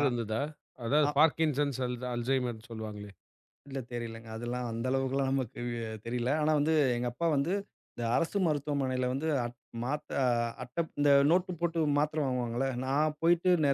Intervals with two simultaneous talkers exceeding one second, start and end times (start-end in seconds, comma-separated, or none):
none